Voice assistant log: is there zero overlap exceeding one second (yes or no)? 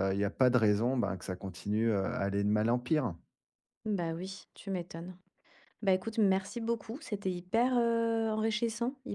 yes